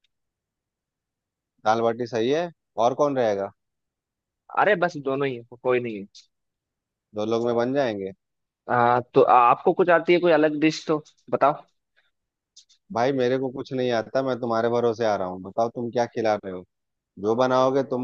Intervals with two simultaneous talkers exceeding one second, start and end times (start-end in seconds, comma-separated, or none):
none